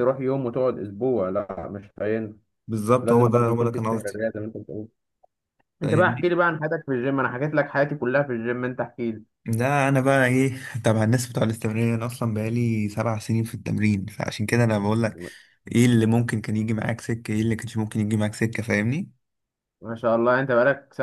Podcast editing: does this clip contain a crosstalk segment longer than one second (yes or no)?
yes